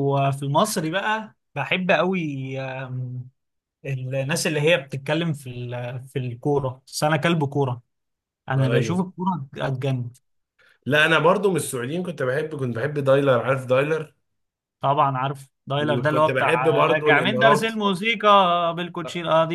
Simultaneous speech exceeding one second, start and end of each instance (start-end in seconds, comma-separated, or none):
15.8-17.8